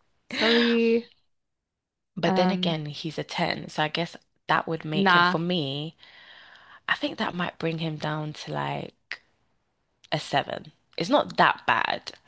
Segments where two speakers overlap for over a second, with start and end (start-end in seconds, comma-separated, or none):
none